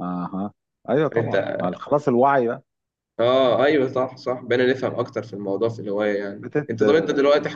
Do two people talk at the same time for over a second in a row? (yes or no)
no